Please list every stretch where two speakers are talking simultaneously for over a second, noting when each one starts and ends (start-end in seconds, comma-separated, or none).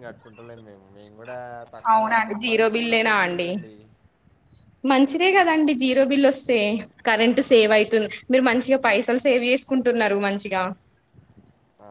1.9-3.5